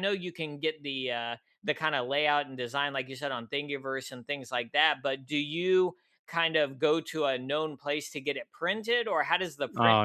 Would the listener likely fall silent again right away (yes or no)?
no